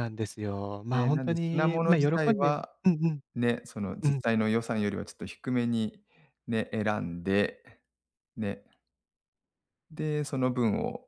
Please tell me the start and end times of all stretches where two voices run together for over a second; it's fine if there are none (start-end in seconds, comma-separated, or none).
0.9-2.7